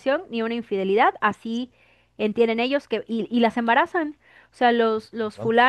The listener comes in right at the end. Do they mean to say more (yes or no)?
no